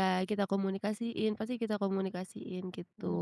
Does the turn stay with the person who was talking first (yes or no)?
no